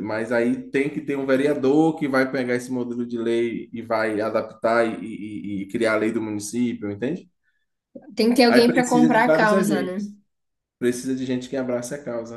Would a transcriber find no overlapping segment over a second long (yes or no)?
no